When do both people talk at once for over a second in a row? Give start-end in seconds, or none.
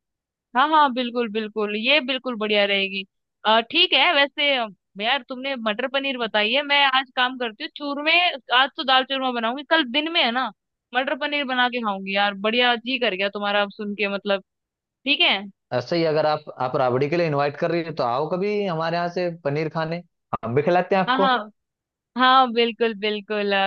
none